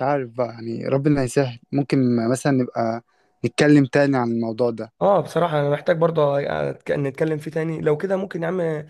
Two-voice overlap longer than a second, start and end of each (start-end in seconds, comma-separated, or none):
none